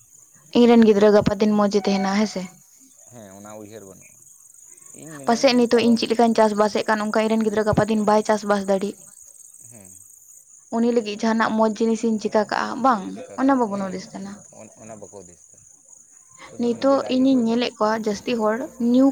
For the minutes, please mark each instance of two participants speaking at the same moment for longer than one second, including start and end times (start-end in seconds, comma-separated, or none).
none